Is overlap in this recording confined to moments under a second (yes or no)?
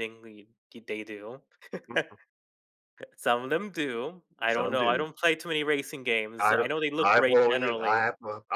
no